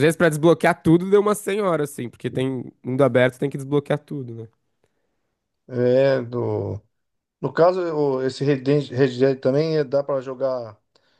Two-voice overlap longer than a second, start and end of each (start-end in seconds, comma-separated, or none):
none